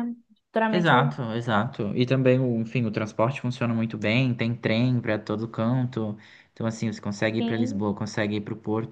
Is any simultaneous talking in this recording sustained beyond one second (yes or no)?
no